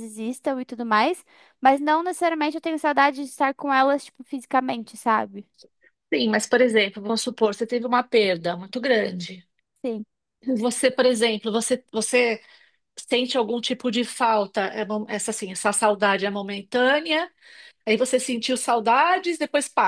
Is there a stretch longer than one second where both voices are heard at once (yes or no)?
no